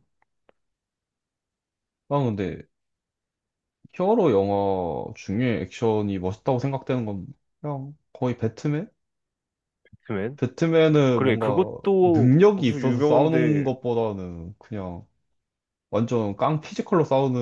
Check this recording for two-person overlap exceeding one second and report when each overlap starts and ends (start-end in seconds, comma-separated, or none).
11.1-13.7